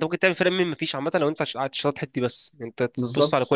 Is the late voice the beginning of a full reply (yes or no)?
no